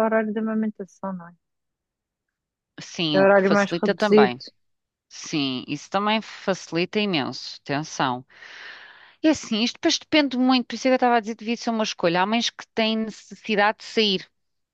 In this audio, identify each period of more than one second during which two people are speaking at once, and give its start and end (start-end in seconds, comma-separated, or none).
3.1-4.3